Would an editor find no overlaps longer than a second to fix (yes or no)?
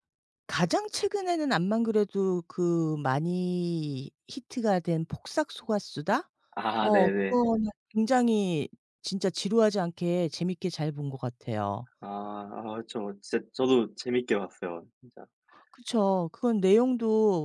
yes